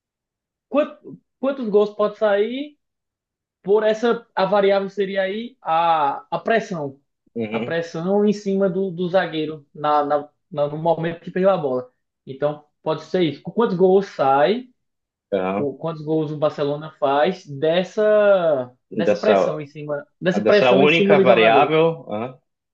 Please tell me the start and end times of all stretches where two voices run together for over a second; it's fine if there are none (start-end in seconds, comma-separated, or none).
20.4-21.7